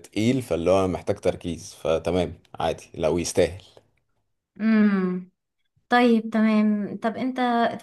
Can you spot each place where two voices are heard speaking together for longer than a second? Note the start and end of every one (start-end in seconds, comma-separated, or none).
none